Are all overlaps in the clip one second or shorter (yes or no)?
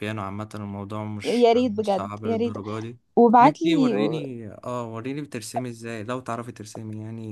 no